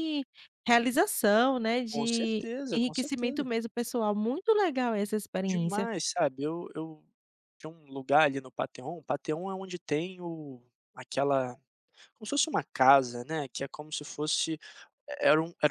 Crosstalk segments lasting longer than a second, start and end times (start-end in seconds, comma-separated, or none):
1.9-3.5